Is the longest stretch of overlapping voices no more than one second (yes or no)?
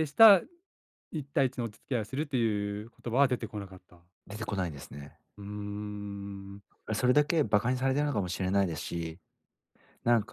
yes